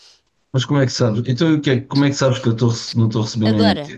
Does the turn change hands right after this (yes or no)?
no